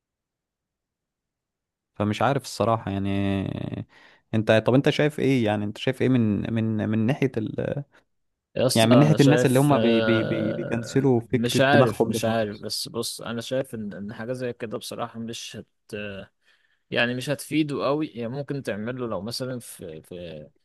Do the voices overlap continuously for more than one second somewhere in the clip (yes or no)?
yes